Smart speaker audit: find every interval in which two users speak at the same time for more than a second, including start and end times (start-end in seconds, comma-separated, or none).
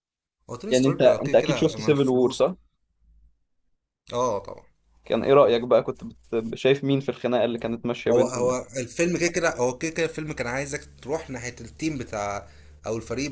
0.7-2.4